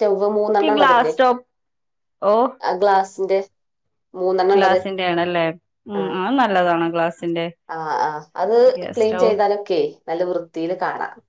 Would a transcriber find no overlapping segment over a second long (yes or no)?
yes